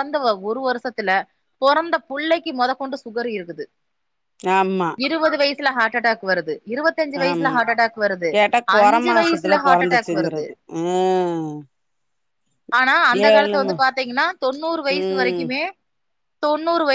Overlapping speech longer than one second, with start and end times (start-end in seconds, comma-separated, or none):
8.8-10.4